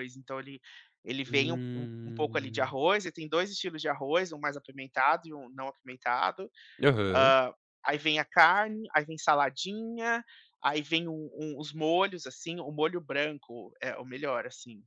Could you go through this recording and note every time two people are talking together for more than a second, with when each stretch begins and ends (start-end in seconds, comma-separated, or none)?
1.3-2.8